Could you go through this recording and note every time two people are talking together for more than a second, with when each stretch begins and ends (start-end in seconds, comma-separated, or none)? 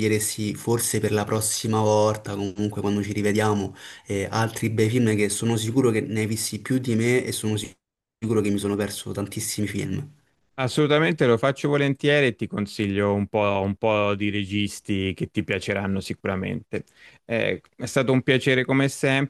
none